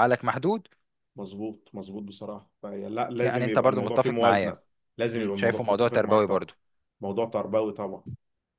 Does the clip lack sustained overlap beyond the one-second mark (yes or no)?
no